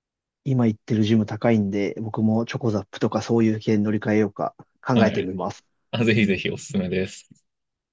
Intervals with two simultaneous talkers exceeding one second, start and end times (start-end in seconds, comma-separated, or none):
none